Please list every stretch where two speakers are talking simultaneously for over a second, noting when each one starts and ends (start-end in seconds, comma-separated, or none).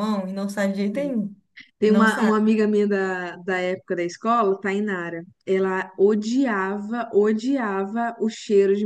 none